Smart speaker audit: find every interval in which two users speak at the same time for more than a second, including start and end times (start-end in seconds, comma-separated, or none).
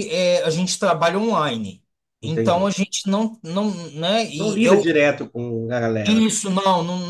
none